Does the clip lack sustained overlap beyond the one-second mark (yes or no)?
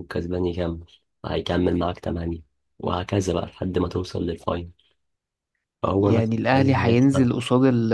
no